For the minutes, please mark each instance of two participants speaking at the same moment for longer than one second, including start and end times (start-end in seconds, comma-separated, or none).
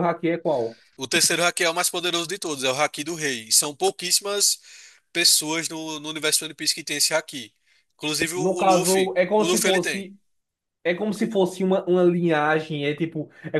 8.3-10.1